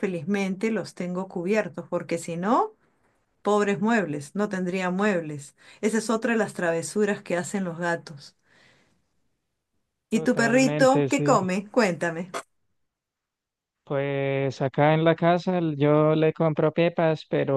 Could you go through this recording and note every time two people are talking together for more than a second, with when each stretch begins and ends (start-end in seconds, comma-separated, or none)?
10.1-11.4